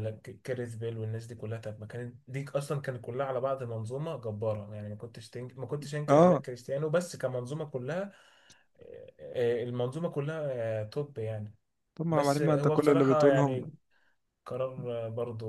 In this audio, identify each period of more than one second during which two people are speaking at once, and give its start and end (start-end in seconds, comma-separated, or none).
12.1-13.7